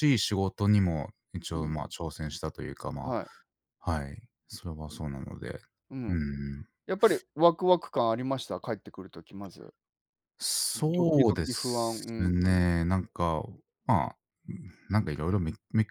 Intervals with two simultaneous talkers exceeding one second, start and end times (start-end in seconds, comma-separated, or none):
10.7-12.3